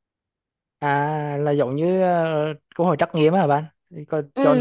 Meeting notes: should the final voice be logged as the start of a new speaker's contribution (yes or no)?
yes